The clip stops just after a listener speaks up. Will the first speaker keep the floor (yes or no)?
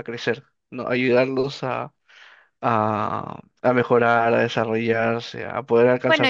no